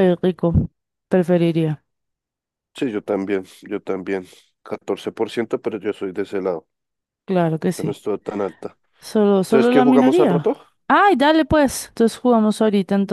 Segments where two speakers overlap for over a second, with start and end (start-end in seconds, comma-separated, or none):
9.4-10.6